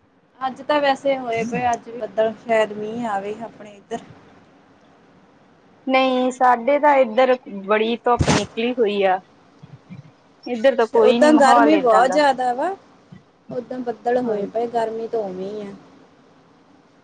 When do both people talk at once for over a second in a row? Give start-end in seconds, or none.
10.7-12.2